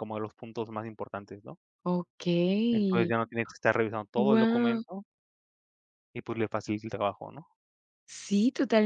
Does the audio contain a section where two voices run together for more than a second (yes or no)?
no